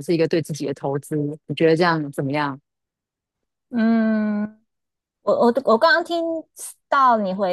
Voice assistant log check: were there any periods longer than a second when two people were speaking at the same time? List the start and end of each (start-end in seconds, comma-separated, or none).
none